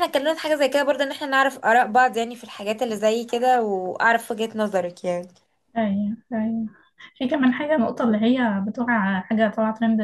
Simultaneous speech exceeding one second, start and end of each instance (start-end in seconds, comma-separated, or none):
none